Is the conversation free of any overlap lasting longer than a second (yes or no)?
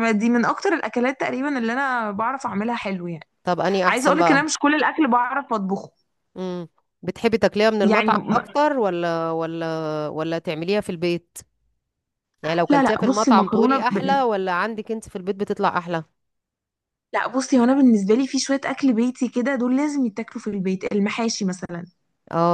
no